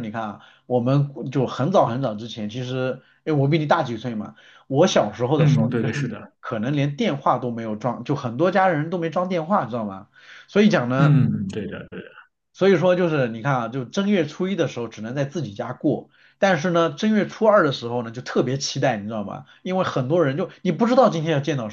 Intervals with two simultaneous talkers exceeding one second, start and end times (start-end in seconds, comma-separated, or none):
none